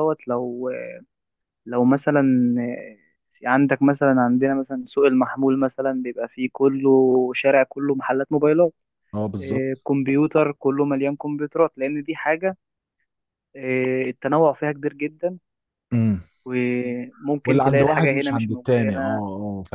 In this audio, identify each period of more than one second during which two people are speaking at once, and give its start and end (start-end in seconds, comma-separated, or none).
17.4-19.2